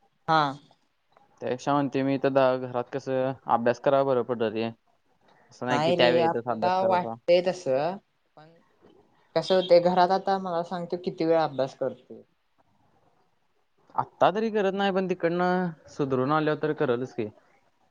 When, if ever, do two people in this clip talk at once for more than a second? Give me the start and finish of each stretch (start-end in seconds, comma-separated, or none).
5.7-7.1